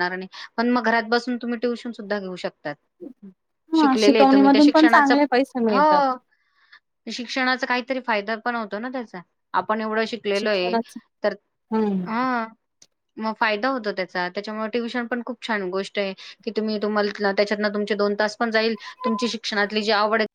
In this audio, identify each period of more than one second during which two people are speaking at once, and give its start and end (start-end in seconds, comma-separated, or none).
3.8-5.1